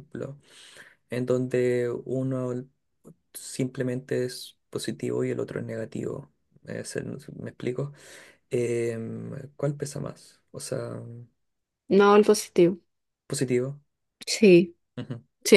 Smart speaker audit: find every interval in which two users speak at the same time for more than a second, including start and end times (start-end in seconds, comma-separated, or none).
none